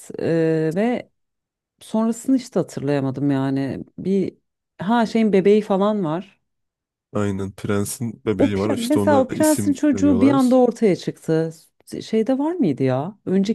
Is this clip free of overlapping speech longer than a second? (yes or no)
no